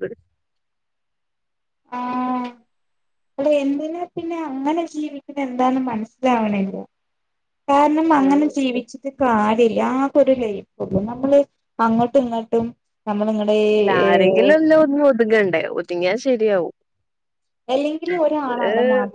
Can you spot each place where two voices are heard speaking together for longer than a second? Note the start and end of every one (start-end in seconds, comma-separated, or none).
none